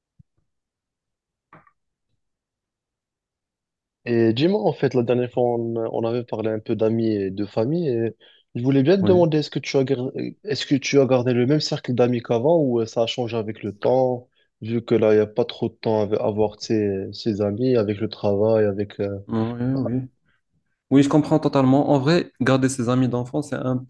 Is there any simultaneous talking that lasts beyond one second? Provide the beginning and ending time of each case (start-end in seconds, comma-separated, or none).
none